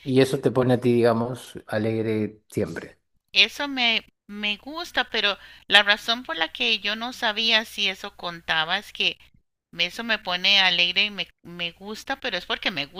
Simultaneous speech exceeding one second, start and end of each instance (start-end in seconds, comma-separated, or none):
none